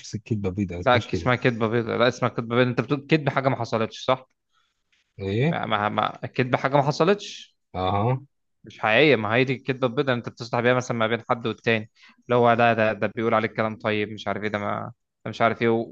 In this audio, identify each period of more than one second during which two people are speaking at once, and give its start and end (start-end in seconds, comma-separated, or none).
none